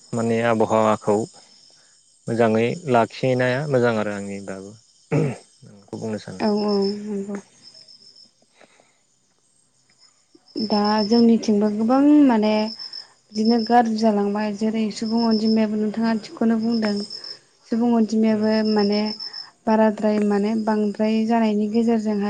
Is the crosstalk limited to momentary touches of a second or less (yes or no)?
yes